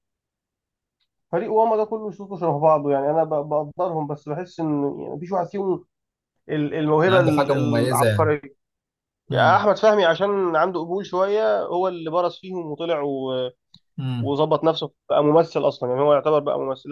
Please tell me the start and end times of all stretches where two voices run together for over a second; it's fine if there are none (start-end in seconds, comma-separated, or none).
7.0-8.3